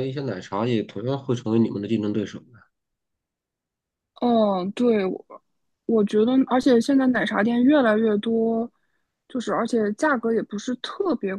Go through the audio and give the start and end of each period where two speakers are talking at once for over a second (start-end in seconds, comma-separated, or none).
none